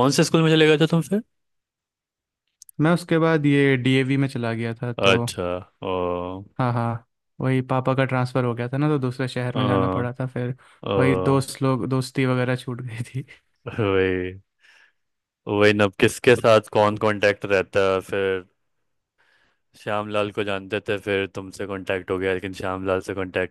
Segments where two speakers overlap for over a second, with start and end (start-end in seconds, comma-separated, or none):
none